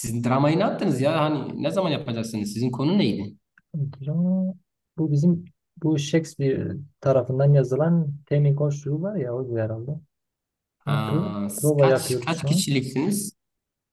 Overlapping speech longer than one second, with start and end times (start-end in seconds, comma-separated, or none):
10.9-12.7